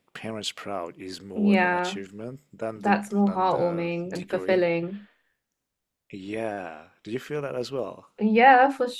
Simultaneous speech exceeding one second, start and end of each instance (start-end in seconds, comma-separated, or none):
2.8-4.6